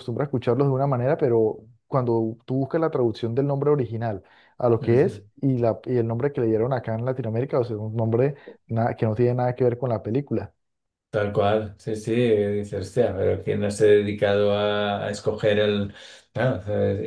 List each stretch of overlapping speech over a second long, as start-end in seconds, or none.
none